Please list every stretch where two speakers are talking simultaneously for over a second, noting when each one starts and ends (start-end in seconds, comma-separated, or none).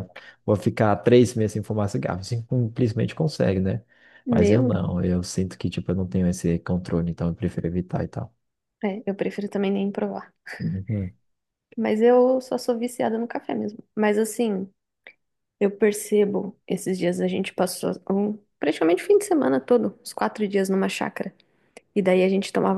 none